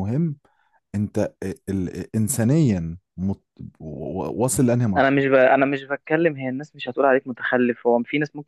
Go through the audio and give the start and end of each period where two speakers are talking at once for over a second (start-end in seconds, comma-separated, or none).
none